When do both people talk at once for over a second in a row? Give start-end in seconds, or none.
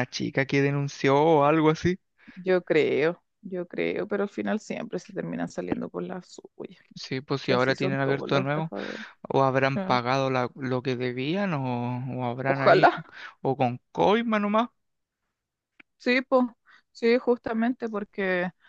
7.4-8.7